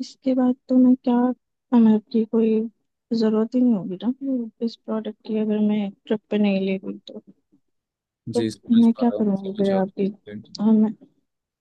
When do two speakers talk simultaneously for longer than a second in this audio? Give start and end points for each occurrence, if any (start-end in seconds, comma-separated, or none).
8.3-10.1